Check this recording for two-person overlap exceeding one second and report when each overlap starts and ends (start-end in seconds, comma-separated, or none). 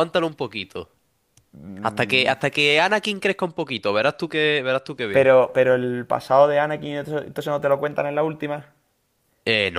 none